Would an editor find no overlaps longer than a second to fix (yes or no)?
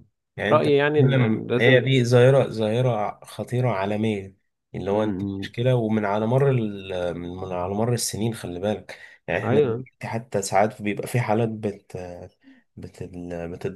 no